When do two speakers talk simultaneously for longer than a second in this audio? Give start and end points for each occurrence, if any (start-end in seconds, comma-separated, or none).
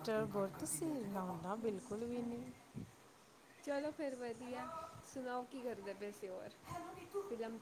none